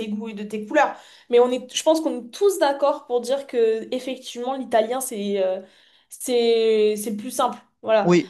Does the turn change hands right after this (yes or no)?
no